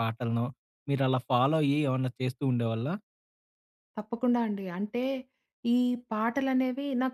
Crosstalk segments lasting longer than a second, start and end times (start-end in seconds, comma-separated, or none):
none